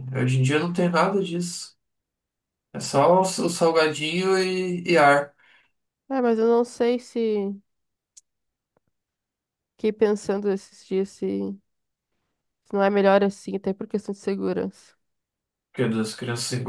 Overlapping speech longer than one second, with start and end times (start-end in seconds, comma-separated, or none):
none